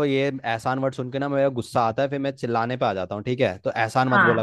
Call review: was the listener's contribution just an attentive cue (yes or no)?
no